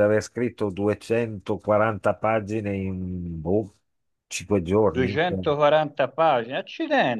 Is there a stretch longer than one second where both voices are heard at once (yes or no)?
no